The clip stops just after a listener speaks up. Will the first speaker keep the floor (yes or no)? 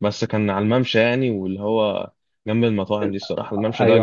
no